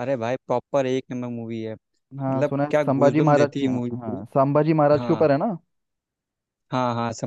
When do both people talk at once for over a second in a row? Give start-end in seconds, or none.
2.2-4.2